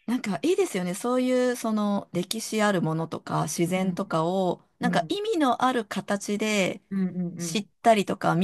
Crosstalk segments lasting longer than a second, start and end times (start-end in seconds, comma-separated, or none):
none